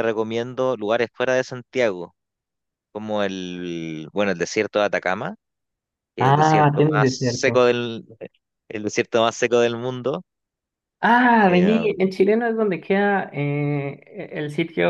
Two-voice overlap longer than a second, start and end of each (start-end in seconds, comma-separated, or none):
6.2-7.6